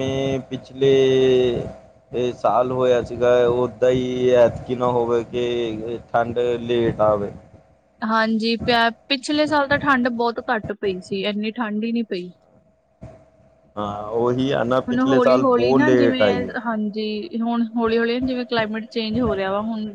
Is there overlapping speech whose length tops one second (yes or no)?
yes